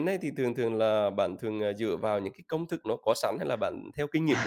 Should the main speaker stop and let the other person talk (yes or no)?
yes